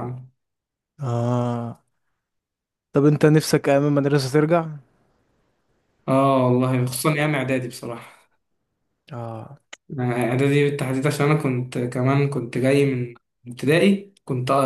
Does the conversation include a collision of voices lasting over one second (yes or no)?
no